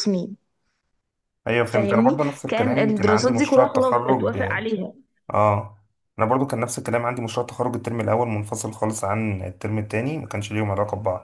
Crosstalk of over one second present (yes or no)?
yes